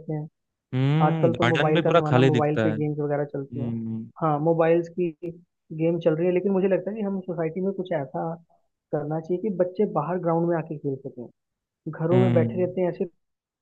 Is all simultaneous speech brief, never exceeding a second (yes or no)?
no